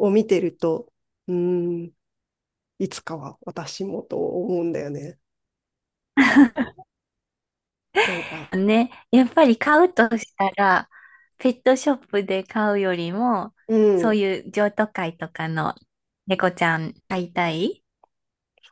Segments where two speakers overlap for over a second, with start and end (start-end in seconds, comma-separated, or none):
none